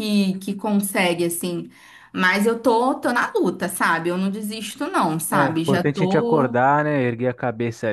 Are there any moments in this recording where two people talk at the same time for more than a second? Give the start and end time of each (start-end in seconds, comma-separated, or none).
5.3-6.6